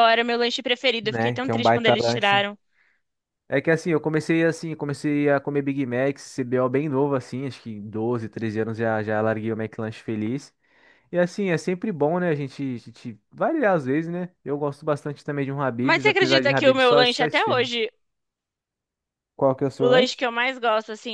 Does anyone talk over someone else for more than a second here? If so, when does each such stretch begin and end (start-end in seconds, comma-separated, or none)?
1.0-2.5, 15.8-17.7